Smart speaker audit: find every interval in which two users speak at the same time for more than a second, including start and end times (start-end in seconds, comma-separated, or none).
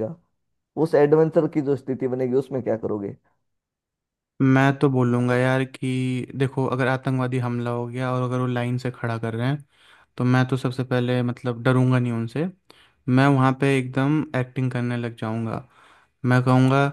none